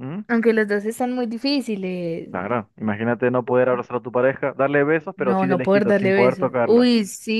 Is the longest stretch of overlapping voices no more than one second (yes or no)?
no